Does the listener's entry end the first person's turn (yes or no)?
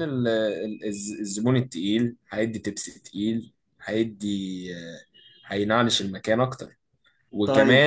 no